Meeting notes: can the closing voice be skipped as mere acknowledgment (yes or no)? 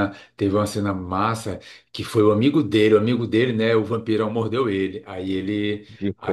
yes